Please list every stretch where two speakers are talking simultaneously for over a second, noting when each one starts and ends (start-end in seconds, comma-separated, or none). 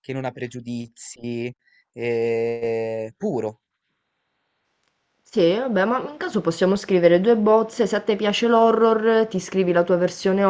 none